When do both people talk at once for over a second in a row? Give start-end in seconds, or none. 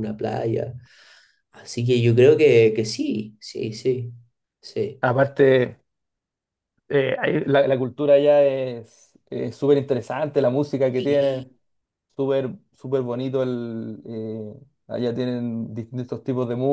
none